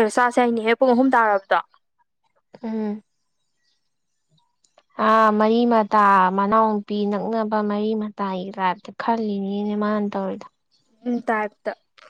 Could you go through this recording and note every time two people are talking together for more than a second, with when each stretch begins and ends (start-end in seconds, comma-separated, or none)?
none